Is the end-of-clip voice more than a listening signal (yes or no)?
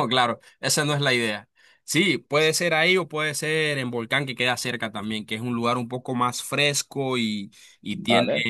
no